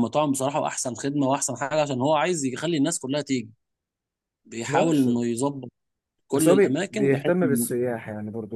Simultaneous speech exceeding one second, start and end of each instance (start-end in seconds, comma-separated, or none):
6.3-7.7